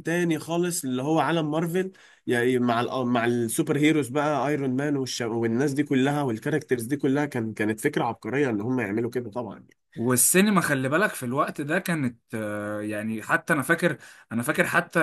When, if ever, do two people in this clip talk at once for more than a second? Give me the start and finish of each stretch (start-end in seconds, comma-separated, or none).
none